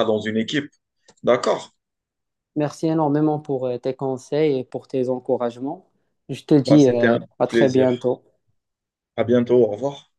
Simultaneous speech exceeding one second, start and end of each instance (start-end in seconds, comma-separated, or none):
6.7-8.0